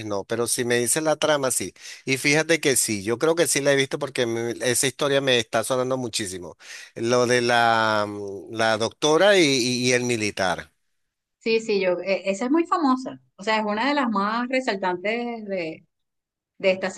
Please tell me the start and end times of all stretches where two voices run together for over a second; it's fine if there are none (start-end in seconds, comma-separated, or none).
none